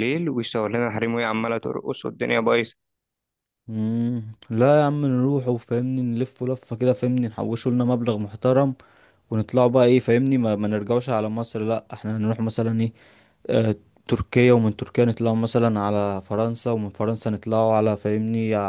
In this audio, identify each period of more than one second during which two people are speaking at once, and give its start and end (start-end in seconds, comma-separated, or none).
none